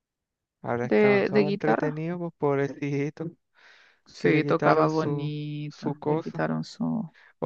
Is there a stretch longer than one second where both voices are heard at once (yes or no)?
yes